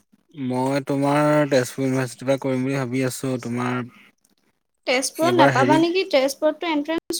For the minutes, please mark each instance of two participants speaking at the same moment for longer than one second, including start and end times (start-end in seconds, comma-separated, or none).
none